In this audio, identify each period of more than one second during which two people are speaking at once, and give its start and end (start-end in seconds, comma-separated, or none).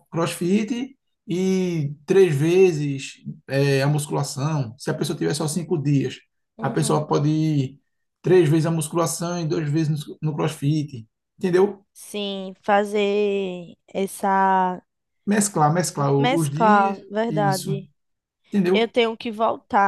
16.2-17.8